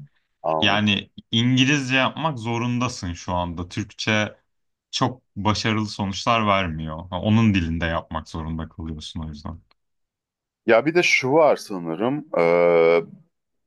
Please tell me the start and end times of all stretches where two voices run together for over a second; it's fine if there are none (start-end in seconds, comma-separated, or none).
none